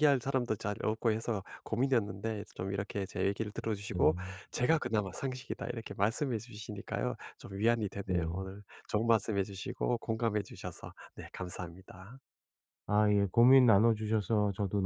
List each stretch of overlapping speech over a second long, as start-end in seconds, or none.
none